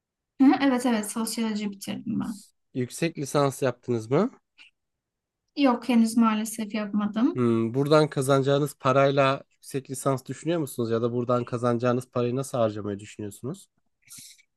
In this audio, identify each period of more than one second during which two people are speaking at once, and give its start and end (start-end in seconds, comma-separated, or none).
none